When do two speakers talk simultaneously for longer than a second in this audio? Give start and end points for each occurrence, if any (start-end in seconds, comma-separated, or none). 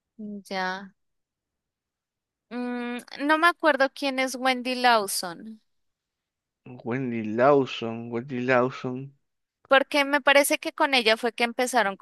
none